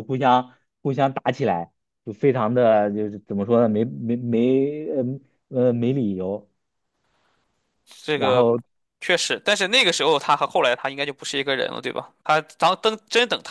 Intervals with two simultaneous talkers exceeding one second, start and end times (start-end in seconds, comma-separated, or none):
none